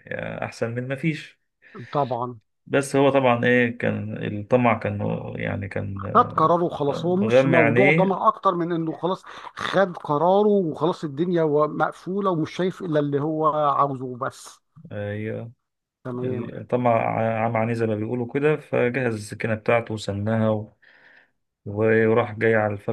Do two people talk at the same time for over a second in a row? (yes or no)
yes